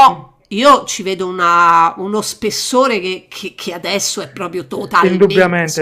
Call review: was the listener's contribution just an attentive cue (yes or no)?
no